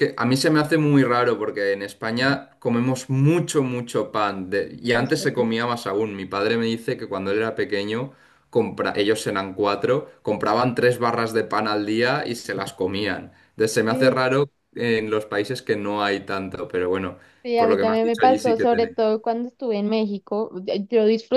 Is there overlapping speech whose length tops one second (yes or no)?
yes